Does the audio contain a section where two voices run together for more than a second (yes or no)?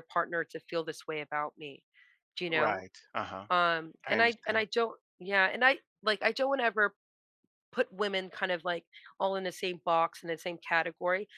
no